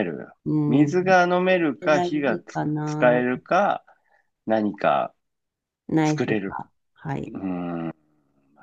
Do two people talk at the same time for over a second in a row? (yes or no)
yes